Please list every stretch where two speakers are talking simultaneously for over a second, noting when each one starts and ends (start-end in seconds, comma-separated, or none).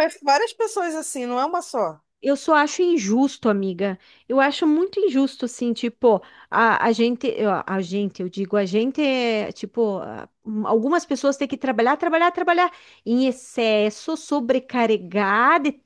none